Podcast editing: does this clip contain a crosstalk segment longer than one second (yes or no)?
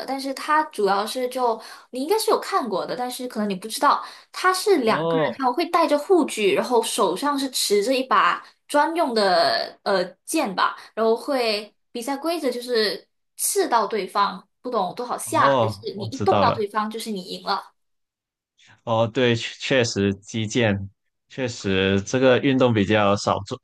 yes